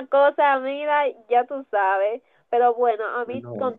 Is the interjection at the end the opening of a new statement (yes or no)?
no